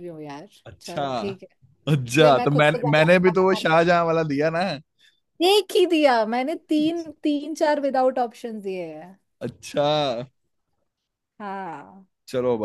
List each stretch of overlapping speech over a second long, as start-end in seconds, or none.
2.0-3.6